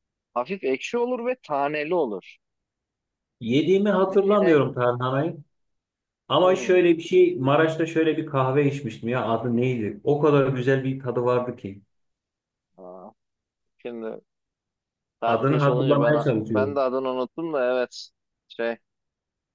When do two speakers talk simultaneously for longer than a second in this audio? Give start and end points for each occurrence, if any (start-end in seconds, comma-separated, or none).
15.2-16.8